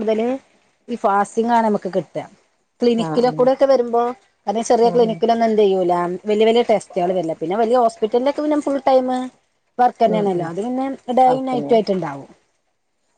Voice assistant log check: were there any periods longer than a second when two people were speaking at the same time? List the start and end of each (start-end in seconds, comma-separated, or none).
none